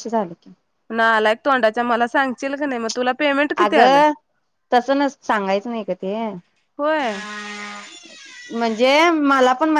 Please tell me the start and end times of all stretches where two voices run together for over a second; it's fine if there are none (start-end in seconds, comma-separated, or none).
none